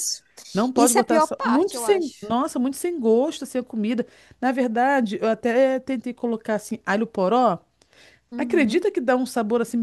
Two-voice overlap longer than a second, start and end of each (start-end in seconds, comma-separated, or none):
0.7-2.3